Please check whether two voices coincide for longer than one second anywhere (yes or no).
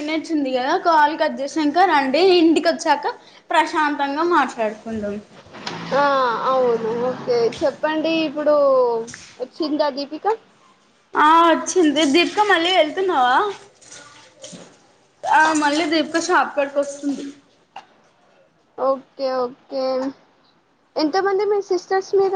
no